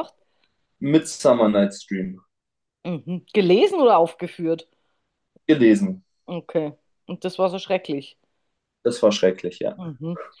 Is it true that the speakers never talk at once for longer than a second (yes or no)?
yes